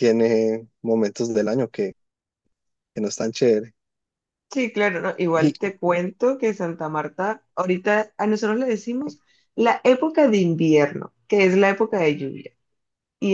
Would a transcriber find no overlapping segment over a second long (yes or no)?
yes